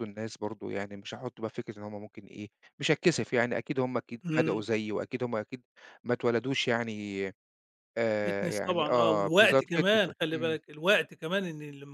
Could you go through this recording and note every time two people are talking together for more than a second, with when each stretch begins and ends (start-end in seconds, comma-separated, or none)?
8.2-10.6